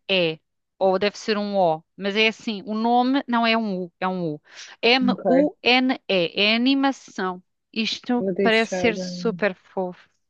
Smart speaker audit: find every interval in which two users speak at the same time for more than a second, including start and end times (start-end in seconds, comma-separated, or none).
8.2-9.4